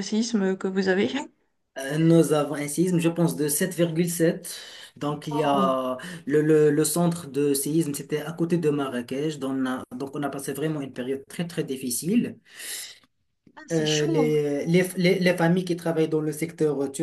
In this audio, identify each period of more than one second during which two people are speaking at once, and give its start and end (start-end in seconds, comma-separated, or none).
none